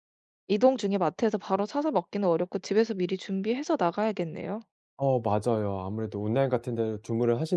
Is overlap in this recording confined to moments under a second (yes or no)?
yes